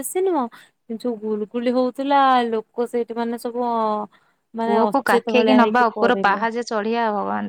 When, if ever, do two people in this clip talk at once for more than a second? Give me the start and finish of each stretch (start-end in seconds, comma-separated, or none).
4.6-6.4